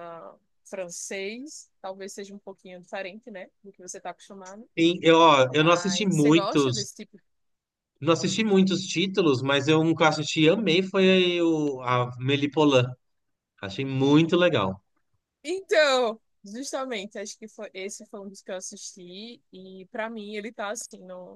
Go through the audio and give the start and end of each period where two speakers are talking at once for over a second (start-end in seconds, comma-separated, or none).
5.6-6.9